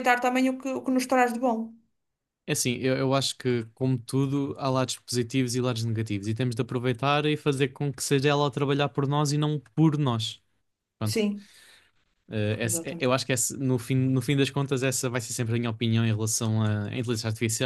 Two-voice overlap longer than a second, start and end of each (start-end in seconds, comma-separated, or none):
none